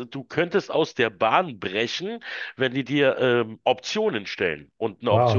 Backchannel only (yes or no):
no